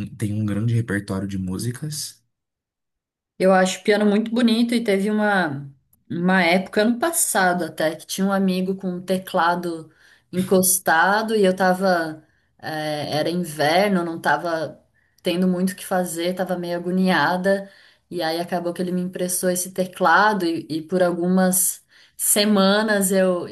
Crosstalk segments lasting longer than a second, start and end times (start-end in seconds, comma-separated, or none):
none